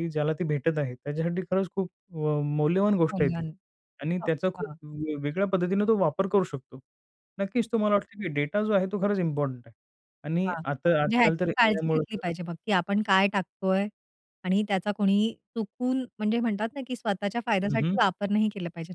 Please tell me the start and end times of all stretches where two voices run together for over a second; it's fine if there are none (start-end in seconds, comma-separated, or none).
10.4-12.3